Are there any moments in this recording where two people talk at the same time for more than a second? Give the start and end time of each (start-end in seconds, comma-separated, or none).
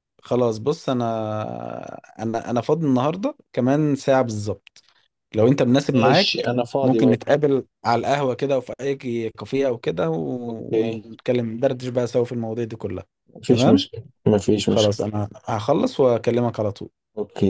6.0-7.3